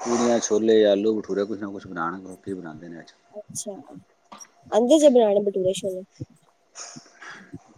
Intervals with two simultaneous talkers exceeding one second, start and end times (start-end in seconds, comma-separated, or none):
none